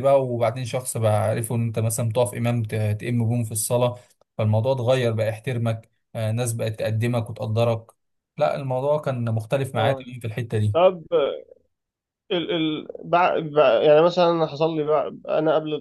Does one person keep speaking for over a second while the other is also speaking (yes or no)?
no